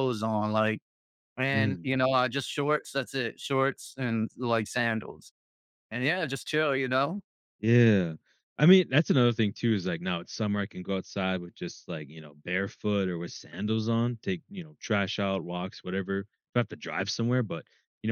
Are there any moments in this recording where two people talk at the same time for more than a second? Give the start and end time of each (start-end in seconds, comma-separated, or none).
none